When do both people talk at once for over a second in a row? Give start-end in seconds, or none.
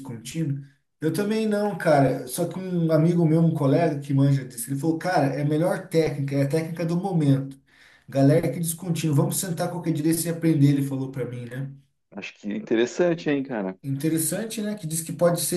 none